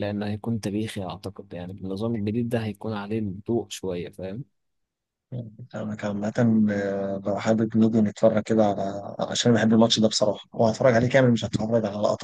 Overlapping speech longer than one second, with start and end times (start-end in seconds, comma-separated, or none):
none